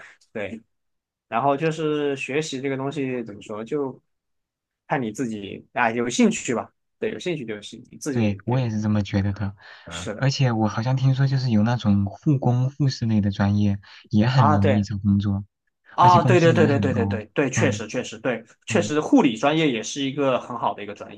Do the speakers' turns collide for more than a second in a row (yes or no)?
yes